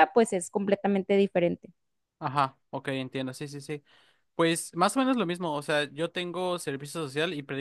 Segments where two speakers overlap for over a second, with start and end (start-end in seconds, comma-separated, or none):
none